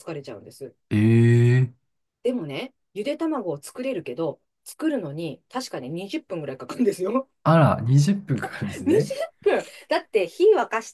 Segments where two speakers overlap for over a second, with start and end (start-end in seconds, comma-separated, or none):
none